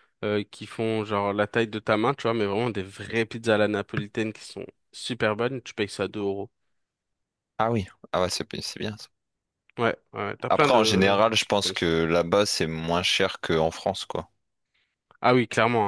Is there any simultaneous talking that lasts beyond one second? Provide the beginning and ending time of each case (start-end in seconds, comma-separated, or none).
10.5-11.9